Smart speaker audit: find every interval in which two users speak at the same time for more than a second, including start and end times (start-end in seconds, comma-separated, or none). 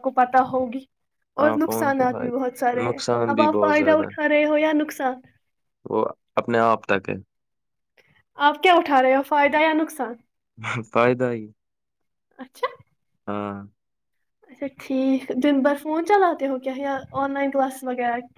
1.5-4.3